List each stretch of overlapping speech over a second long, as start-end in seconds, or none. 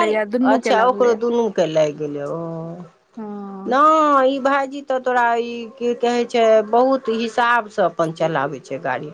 none